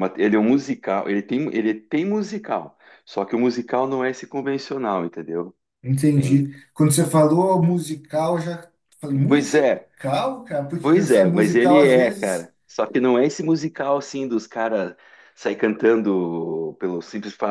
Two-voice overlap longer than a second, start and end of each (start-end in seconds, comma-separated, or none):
10.8-12.5